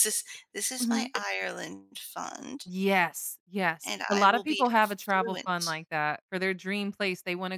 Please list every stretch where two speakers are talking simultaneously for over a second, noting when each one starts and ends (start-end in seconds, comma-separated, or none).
3.9-5.8